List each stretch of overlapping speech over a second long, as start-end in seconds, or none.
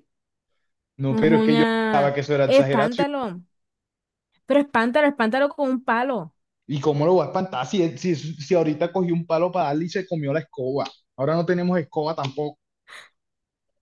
1.1-3.0